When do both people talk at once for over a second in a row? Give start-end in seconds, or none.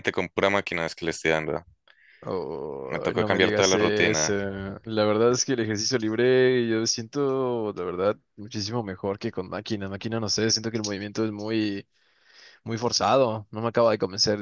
2.9-4.3